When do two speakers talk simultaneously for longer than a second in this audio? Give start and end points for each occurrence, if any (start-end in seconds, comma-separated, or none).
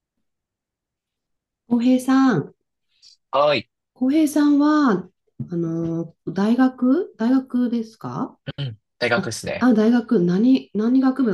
none